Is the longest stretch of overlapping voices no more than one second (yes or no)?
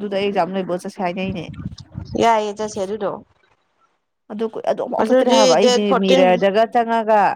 no